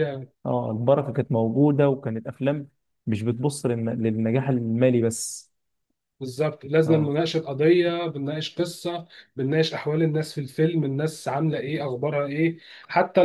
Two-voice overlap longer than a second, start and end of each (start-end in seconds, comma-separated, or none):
none